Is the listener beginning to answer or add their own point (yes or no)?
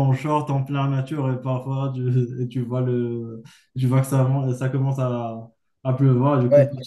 no